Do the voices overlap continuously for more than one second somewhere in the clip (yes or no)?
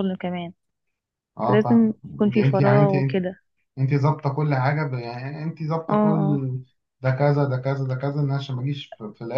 yes